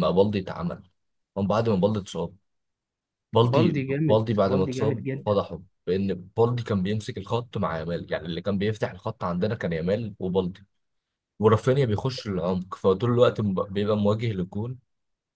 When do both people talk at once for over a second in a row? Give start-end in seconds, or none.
3.5-5.4